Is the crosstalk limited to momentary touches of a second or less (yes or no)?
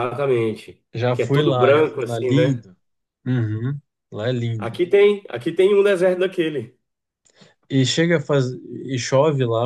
no